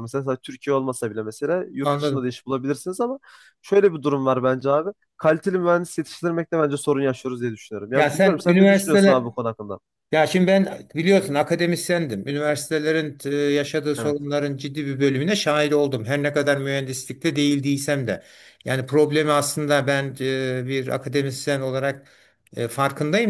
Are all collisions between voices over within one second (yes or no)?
no